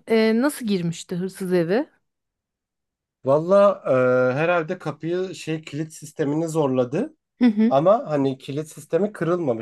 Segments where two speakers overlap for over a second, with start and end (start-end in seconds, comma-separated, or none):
none